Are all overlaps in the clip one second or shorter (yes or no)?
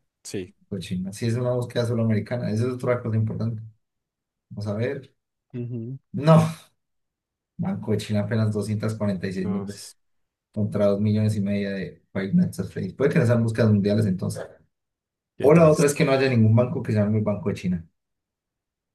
yes